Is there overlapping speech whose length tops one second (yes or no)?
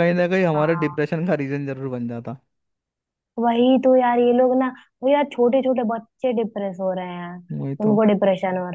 no